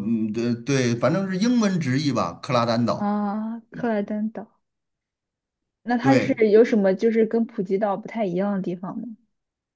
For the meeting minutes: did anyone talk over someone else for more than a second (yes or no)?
no